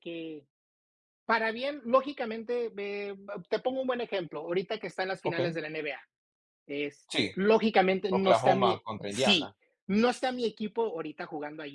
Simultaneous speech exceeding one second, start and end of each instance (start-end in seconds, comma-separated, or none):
8.1-9.6